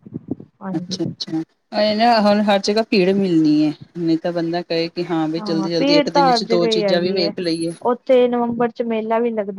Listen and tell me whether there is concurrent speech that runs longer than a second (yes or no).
no